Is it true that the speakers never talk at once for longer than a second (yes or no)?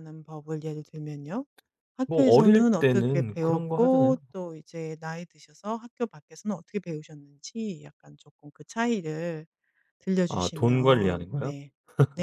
no